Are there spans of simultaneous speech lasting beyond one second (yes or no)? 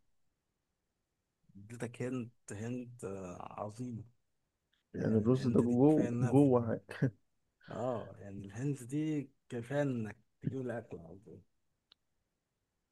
yes